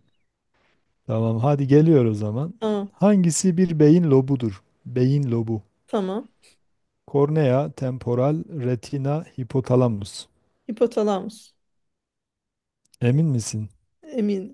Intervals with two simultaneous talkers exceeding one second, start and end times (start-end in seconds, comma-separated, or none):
none